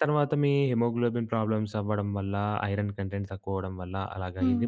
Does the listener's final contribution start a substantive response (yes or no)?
no